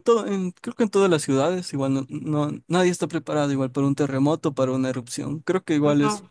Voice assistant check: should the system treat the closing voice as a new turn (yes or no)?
no